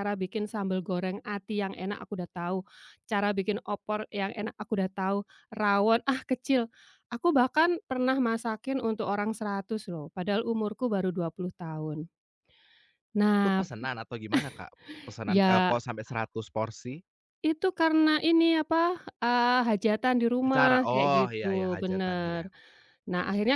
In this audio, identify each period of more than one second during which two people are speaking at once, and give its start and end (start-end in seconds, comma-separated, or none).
20.5-22.4